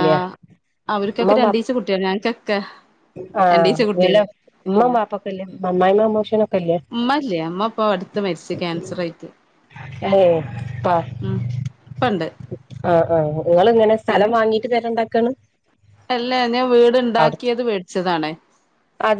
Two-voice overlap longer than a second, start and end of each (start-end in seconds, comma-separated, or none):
none